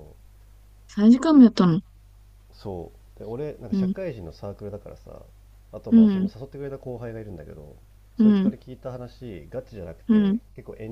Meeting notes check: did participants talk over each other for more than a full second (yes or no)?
no